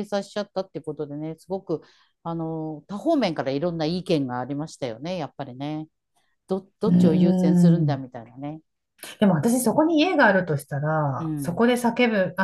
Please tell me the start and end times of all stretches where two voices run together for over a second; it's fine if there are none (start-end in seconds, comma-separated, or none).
6.8-8.1